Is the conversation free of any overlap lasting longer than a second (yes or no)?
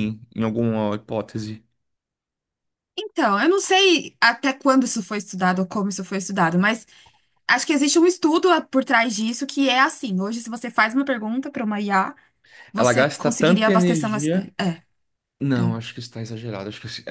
no